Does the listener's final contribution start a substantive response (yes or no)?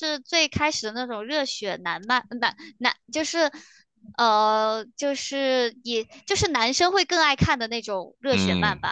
yes